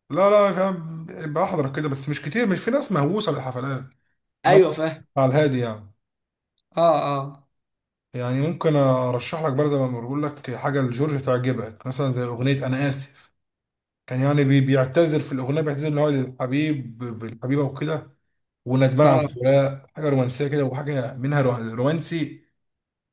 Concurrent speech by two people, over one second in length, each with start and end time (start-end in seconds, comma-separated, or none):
none